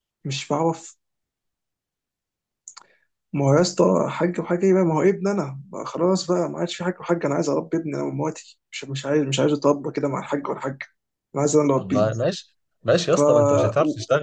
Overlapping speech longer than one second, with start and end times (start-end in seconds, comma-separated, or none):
none